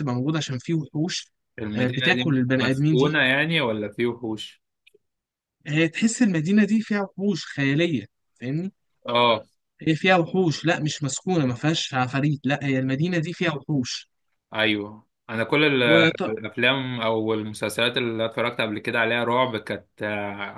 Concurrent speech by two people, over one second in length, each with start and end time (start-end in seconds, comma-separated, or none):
1.7-3.2